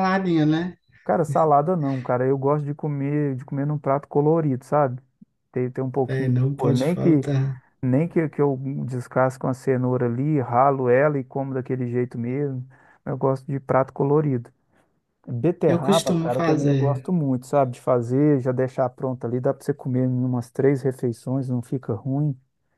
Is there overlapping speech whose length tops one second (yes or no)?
yes